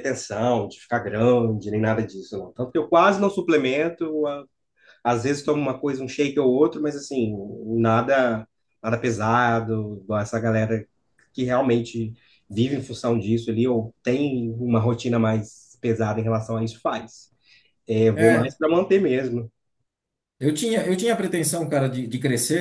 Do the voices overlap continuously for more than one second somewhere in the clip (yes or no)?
no